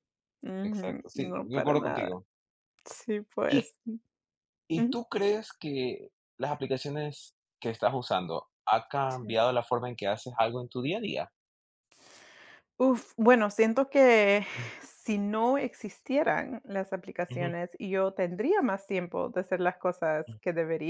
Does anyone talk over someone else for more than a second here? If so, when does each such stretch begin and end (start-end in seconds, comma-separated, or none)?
0.6-2.1